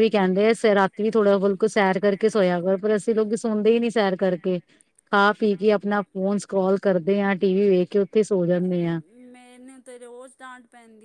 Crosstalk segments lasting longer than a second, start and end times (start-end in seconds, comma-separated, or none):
none